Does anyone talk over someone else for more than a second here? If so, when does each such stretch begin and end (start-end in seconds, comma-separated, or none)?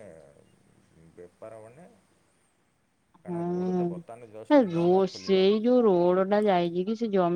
3.3-5.5